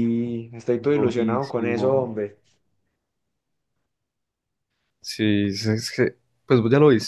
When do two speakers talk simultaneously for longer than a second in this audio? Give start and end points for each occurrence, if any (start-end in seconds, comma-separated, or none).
0.9-2.1